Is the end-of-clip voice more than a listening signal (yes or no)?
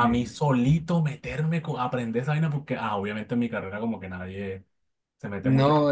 yes